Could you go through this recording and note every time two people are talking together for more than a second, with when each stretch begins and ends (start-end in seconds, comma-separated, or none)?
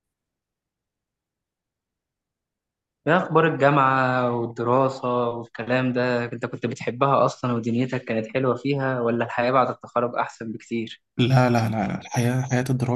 none